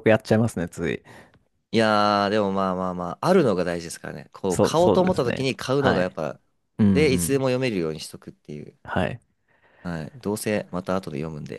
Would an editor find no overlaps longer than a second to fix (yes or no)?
no